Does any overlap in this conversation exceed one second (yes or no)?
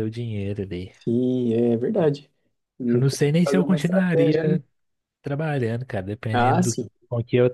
yes